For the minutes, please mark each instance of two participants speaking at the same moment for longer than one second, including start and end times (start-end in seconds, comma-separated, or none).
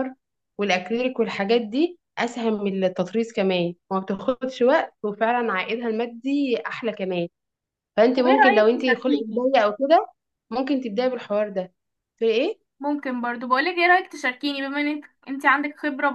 8.2-9.5